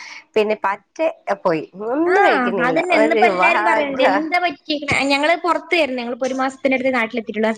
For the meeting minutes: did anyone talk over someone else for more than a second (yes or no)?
yes